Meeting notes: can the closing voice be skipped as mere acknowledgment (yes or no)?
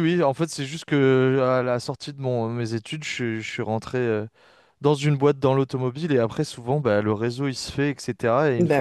yes